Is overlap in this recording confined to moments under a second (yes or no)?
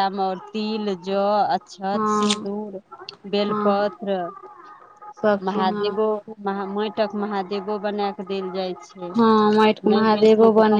yes